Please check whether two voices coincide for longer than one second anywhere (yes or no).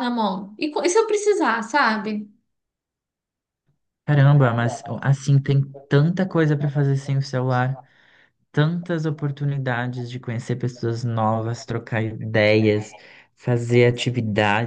no